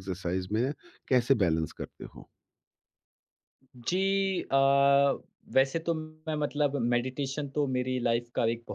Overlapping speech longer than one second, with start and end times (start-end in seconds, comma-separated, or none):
none